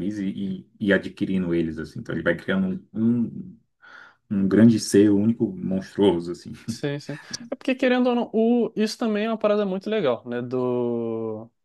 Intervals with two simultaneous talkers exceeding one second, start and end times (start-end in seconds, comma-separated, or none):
none